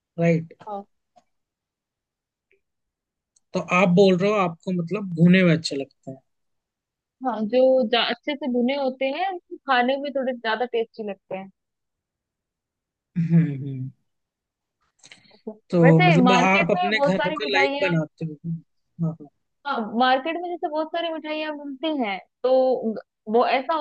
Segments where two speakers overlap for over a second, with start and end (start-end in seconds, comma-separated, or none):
15.7-17.9